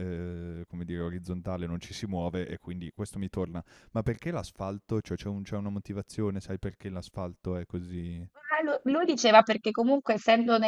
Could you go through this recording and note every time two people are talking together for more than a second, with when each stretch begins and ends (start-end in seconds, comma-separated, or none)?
none